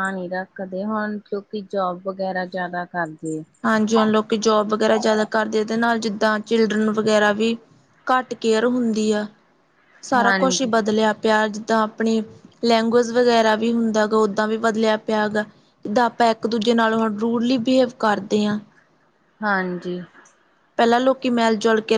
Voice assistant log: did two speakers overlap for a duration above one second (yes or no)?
no